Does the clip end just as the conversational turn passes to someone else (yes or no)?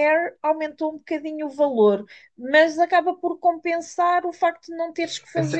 yes